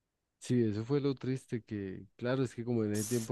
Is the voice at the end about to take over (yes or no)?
no